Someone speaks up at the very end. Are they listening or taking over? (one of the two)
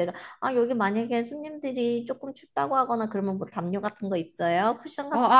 taking over